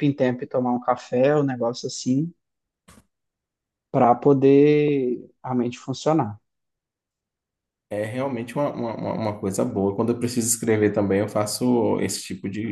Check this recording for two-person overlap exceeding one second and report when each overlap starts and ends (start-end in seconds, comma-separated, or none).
none